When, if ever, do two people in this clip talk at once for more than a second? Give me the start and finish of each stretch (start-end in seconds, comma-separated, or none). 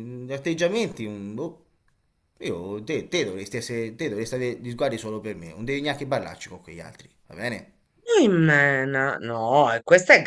none